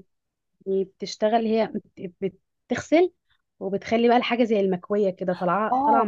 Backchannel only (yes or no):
no